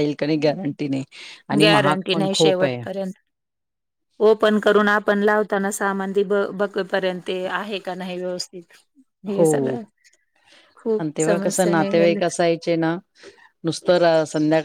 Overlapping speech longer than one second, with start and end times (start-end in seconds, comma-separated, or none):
none